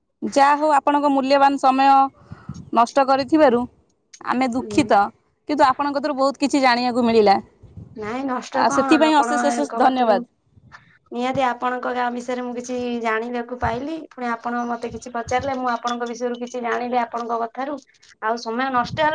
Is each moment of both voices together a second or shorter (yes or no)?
no